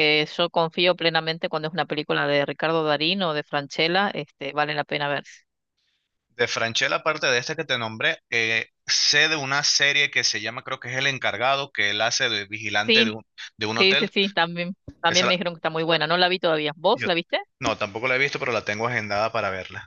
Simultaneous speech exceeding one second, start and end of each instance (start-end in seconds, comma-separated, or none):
none